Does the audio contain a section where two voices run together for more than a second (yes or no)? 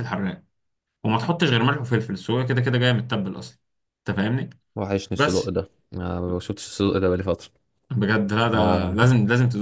no